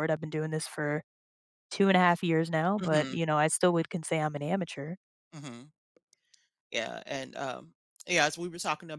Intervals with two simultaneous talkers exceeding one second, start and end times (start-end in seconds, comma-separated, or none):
none